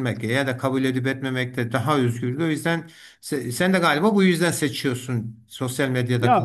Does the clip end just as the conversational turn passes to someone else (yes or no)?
yes